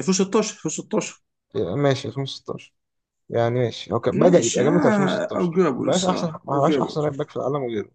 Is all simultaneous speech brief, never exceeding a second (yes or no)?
no